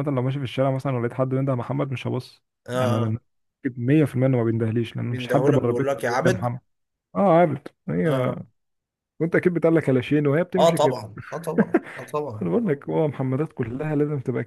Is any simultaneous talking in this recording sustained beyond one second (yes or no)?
yes